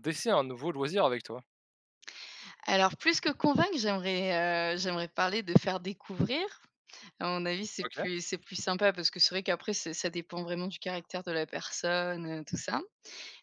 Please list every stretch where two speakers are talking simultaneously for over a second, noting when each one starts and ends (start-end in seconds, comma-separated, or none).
none